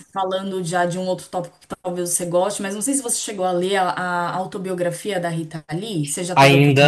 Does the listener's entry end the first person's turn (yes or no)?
yes